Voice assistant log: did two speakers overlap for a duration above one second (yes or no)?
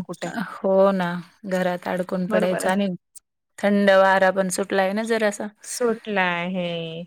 no